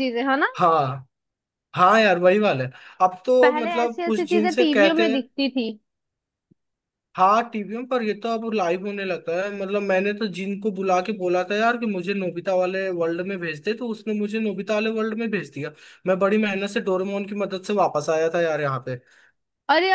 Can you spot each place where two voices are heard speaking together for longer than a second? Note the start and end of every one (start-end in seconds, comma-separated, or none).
3.4-5.2